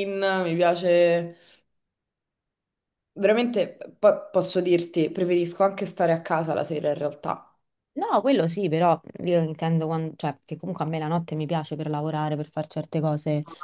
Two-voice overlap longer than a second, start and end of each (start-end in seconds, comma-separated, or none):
none